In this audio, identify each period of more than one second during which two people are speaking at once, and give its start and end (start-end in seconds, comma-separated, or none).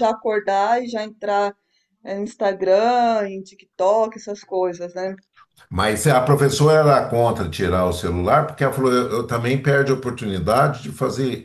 none